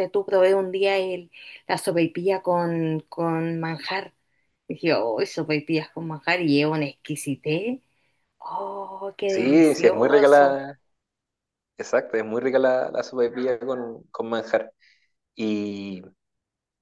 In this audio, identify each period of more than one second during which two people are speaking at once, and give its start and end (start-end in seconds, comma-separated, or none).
9.3-10.6